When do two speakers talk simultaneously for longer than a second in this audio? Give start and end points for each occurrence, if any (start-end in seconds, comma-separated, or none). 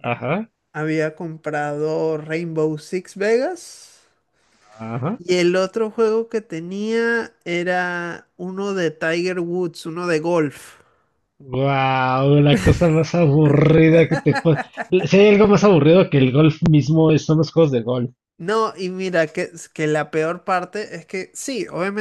none